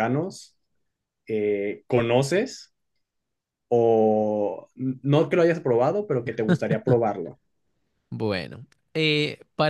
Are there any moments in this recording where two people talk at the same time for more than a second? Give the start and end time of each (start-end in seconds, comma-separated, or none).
none